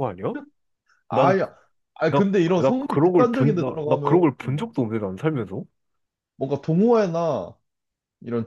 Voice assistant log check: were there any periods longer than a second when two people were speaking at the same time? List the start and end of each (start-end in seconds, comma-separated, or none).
2.1-4.2